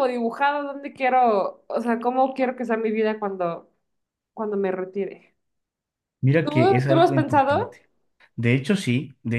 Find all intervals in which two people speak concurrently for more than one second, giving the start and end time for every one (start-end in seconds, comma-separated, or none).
6.4-7.8